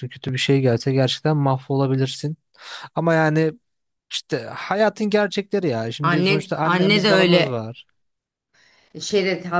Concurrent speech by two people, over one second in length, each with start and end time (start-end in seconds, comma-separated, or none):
6.0-7.6